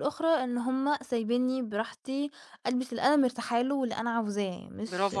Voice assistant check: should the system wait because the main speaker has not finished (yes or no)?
no